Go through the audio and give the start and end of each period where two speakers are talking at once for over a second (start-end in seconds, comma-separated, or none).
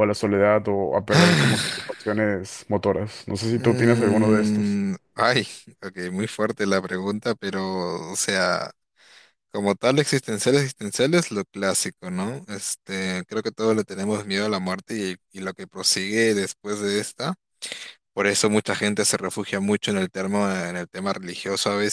3.5-4.8